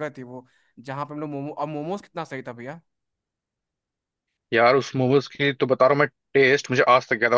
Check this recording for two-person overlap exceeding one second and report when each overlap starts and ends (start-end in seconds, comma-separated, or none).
none